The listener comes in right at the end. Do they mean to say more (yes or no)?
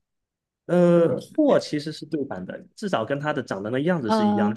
no